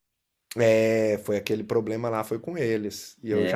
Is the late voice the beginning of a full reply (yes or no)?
no